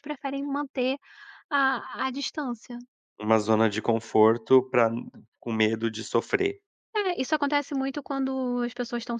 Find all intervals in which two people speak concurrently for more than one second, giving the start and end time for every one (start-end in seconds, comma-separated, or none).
none